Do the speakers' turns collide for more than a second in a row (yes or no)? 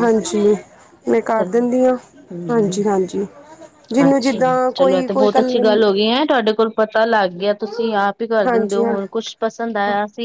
yes